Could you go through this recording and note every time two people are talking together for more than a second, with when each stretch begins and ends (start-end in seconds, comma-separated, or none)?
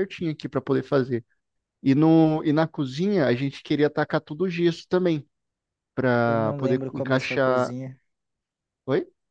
6.2-7.7